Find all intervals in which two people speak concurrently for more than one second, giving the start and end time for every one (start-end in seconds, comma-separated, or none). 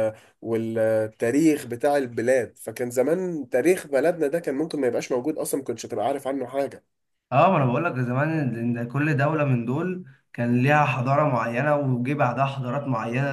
none